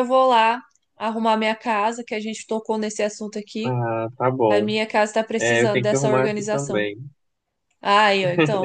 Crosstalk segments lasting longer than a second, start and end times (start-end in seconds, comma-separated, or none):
5.4-6.9